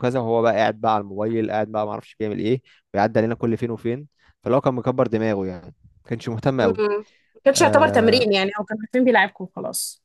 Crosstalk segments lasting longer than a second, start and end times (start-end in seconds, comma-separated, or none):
none